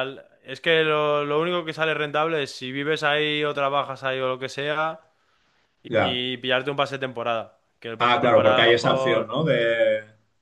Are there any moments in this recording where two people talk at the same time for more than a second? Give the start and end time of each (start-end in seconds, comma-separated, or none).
8.0-9.4